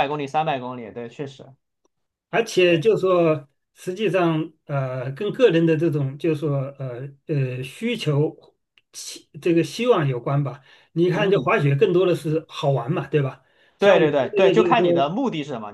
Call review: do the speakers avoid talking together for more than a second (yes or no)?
no